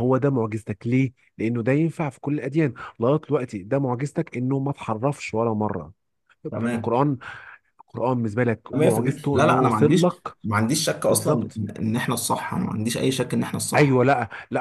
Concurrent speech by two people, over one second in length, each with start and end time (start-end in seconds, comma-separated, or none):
8.7-10.4